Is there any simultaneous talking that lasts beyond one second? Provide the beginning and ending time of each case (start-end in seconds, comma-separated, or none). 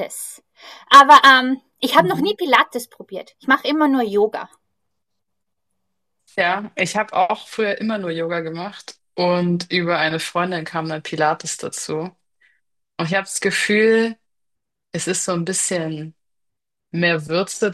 none